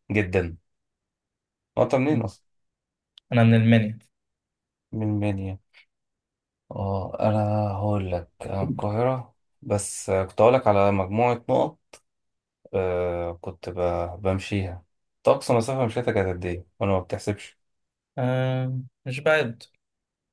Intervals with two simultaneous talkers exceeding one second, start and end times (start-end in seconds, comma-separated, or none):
none